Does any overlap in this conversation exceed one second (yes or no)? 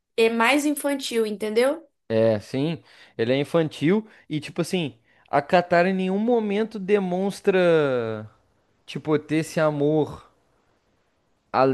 no